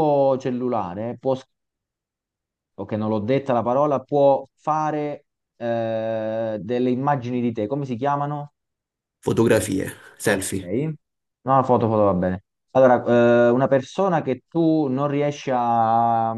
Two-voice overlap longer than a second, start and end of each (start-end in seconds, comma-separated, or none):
none